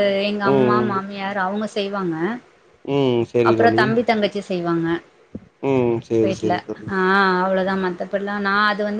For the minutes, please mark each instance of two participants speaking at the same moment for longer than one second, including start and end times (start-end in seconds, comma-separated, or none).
none